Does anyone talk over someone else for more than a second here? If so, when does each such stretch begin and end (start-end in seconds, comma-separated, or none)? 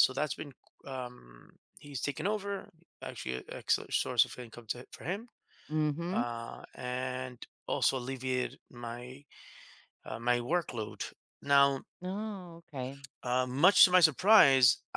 none